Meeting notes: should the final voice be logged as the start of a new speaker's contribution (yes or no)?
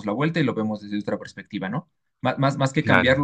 no